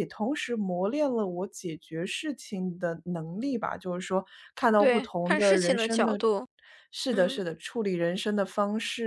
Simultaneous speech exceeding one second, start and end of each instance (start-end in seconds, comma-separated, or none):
4.8-6.2